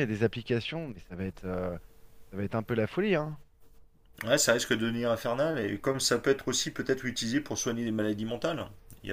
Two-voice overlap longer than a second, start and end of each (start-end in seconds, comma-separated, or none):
none